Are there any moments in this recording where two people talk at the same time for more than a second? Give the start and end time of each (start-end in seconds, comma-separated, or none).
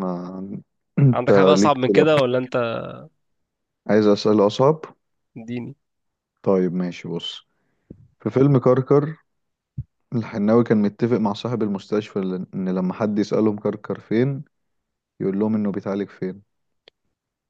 1.1-2.5